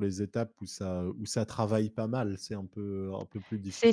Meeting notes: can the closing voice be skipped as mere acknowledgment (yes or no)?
no